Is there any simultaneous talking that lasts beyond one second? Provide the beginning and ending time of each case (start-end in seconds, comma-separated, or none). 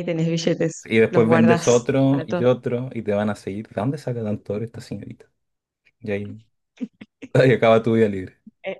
0.8-2.4